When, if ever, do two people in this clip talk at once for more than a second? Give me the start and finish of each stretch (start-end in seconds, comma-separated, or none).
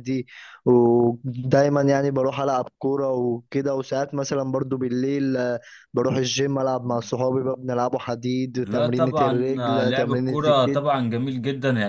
8.6-10.8